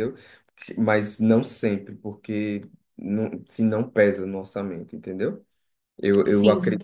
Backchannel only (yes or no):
yes